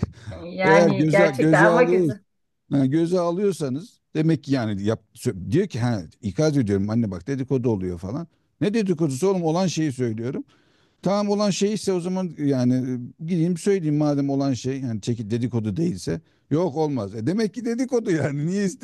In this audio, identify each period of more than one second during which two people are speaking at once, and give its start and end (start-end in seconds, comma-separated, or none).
0.6-2.1